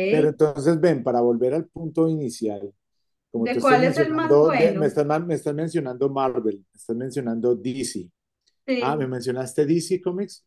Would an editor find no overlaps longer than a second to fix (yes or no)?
no